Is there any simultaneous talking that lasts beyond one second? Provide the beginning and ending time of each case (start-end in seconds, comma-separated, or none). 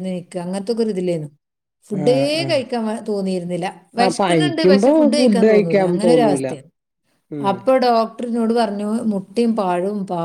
4.0-6.5